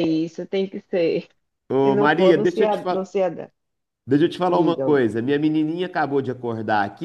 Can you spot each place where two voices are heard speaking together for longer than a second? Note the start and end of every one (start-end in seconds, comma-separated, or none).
1.8-3.1